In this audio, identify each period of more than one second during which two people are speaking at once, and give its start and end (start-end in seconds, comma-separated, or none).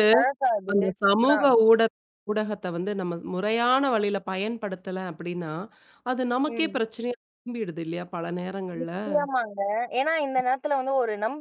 none